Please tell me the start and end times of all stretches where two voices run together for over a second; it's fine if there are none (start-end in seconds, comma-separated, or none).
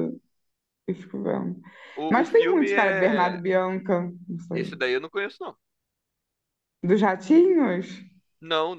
2.1-3.4